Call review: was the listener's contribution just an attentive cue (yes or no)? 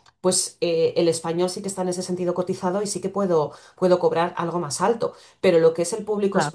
yes